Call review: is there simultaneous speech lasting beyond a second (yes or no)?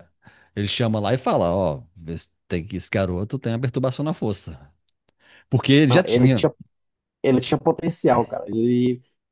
no